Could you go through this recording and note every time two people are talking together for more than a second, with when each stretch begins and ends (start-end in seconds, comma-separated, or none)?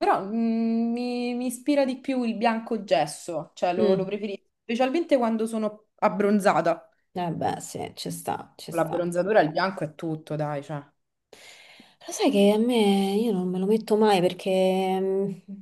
none